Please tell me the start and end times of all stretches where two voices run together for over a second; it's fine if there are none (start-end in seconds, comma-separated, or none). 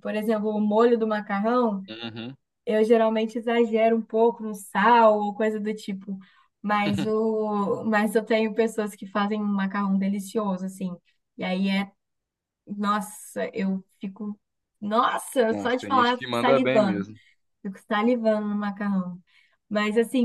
15.5-17.1